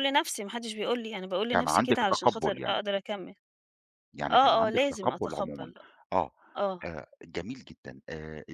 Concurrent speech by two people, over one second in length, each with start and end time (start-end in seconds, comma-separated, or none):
1.5-2.8, 4.3-5.7